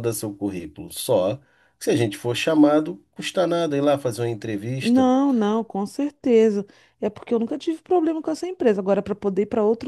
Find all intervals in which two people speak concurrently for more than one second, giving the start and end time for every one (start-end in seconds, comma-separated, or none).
none